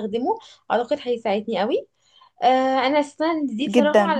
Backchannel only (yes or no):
yes